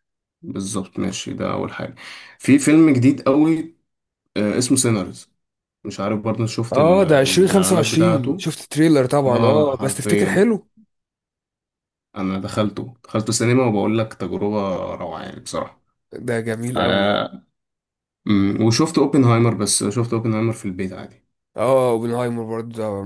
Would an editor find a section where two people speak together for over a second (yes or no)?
yes